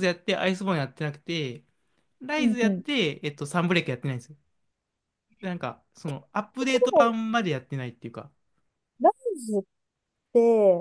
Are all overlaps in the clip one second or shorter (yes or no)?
yes